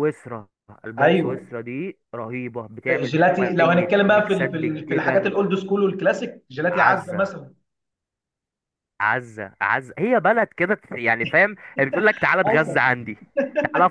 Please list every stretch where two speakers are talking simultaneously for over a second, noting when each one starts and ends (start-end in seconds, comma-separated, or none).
2.9-5.3